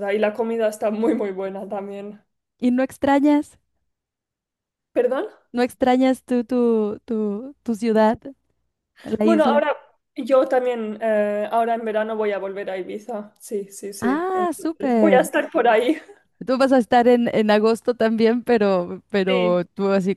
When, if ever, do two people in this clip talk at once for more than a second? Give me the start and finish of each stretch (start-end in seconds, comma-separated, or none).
14.0-15.3